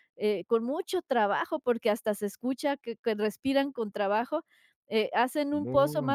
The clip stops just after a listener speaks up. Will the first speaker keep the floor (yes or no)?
yes